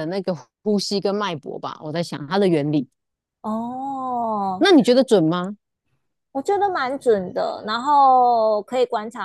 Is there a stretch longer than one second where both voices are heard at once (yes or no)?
no